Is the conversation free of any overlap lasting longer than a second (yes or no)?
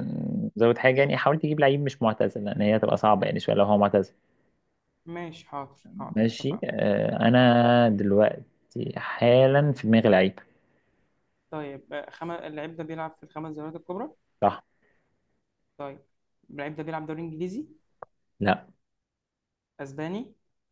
yes